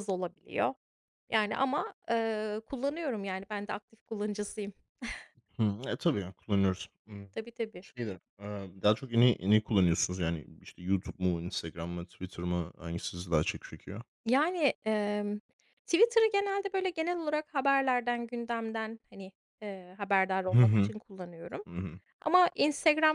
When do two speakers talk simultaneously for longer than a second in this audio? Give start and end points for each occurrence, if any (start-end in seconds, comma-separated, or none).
none